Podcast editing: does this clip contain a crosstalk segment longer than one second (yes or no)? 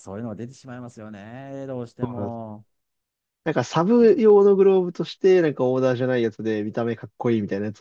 no